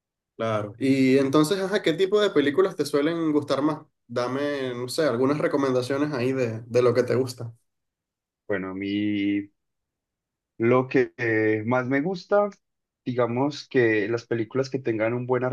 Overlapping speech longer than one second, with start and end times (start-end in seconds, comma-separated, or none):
none